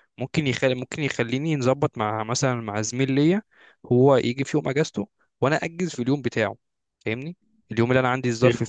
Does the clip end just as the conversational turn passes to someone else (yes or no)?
no